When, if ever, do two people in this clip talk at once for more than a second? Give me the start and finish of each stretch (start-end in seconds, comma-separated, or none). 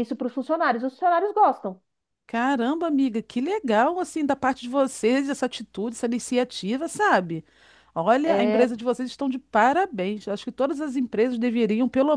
none